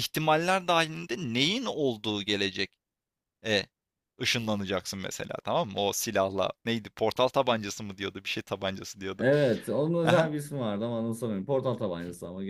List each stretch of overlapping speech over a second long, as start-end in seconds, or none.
none